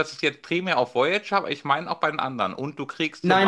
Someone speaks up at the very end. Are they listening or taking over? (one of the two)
taking over